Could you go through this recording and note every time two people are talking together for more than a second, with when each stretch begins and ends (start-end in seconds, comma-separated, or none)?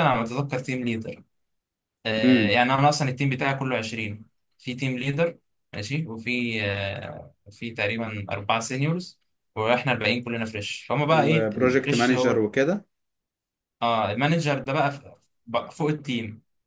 11.1-12.4